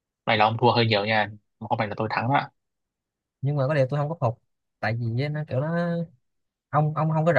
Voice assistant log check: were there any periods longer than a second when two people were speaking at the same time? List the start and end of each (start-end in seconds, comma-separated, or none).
none